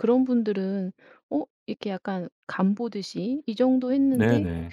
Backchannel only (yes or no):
yes